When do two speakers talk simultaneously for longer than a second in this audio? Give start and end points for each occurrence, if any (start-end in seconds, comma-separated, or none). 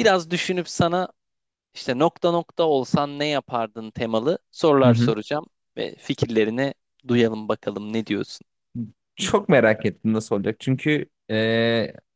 none